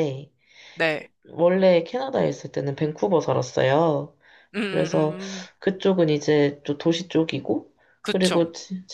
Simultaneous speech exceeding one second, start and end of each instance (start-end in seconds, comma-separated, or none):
none